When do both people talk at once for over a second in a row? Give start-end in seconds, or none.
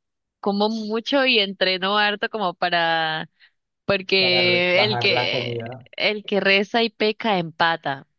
4.2-5.6